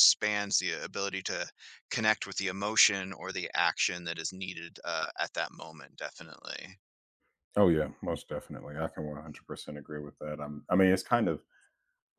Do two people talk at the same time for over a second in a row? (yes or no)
no